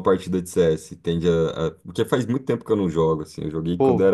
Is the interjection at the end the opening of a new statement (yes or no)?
no